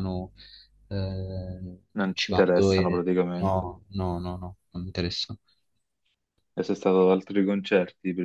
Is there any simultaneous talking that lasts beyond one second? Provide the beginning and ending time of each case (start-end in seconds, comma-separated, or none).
2.0-3.7